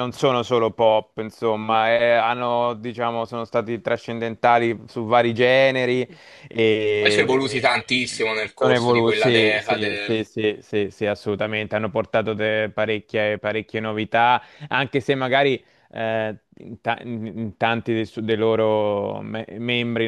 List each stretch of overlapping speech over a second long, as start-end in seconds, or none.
7.0-10.2